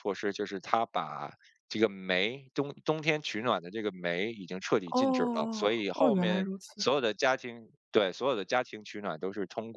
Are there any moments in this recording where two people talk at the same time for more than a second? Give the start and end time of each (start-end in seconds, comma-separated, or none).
4.9-6.8